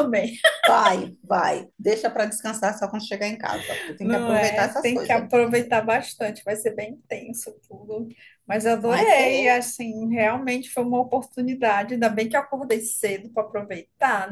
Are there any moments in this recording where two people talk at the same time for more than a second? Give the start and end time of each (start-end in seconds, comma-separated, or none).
4.0-5.2